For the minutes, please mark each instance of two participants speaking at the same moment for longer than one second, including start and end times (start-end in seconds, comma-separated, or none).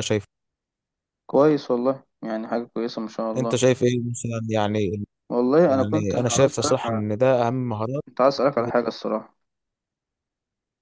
5.7-7.0